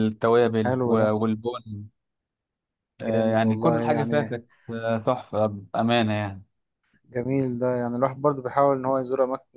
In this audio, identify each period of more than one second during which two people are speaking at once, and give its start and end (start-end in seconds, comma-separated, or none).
3.0-4.4